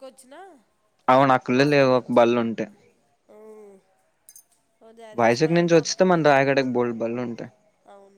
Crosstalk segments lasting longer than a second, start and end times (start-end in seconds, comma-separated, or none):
5.2-6.5